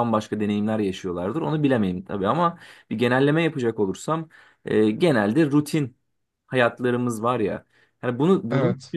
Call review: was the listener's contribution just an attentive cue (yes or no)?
yes